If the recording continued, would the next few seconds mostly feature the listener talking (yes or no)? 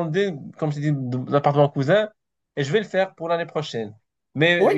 no